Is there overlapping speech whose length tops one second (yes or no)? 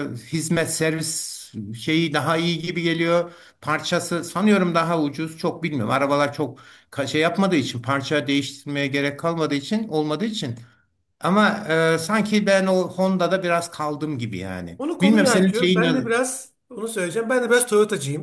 yes